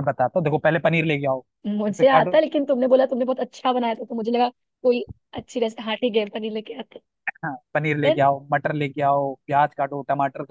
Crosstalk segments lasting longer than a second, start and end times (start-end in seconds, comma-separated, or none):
none